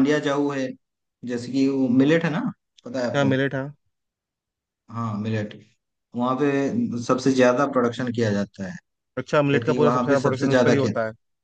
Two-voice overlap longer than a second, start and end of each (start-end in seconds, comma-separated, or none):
9.5-10.9